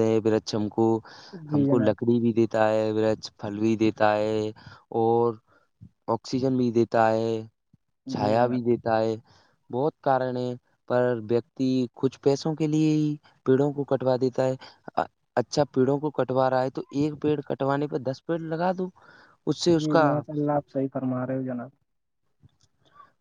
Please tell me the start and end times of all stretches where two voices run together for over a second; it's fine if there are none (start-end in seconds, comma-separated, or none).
none